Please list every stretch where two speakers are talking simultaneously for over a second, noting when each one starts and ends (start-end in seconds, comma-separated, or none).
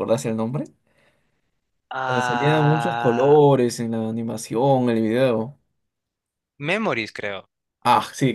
2.1-3.4